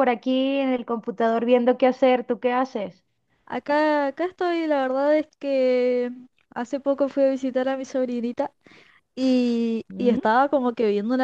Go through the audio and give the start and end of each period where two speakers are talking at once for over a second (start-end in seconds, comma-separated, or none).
none